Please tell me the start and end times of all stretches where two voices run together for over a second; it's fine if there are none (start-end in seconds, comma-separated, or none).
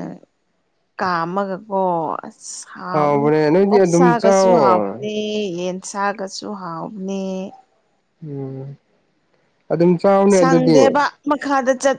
3.7-5.0